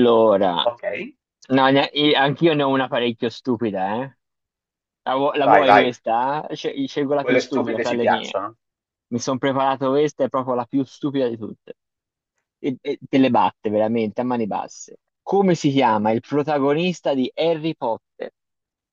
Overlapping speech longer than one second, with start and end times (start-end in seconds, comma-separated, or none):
7.2-8.4